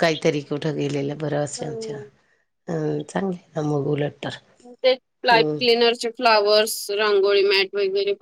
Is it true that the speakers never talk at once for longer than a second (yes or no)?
yes